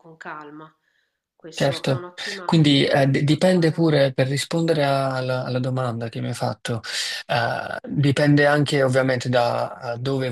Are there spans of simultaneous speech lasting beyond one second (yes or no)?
yes